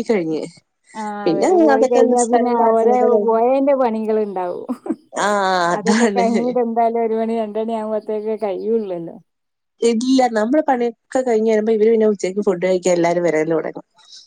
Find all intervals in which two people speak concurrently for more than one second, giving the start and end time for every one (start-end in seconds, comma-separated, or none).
1.3-3.4